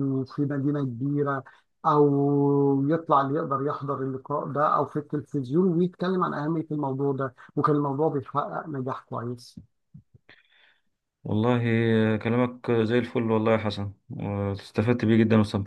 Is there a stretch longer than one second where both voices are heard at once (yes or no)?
no